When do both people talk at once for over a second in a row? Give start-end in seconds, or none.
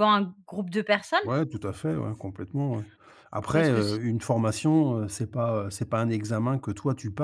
none